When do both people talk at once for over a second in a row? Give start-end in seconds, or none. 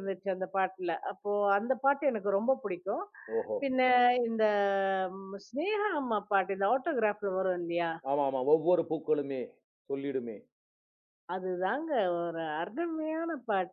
none